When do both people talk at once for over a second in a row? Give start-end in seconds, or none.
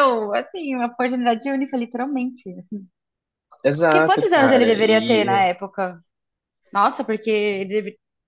3.8-5.4